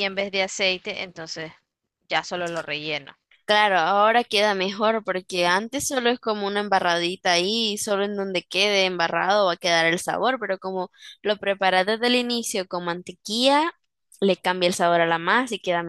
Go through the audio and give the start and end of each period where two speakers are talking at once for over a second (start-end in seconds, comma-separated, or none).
none